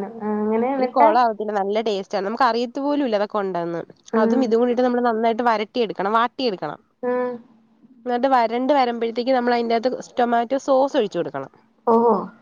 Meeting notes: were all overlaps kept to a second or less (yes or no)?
yes